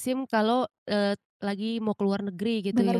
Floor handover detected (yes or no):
yes